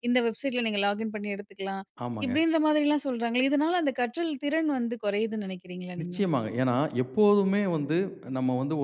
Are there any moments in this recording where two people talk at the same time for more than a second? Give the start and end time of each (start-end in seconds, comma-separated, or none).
none